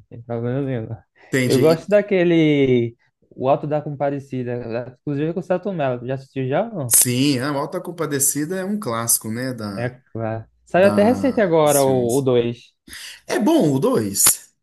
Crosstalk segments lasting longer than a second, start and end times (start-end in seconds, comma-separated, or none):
10.7-12.3